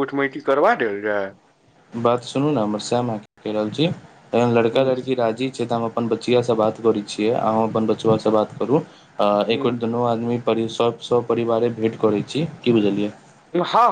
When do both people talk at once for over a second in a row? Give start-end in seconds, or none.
none